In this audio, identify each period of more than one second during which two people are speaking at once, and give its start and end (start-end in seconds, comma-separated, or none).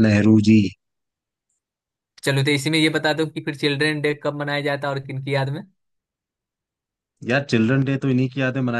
none